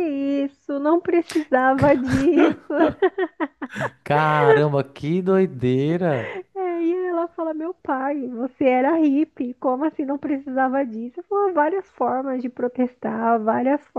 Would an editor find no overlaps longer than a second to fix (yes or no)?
yes